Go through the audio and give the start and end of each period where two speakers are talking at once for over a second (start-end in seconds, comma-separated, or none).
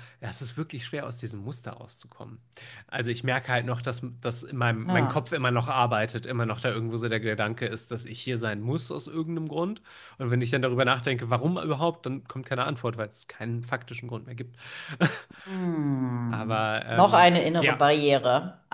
16.3-17.9